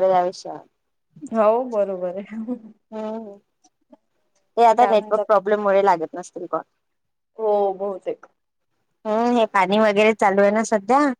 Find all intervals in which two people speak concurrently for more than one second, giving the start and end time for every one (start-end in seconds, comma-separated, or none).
none